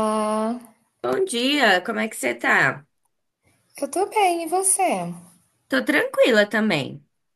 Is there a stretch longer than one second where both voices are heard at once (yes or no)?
no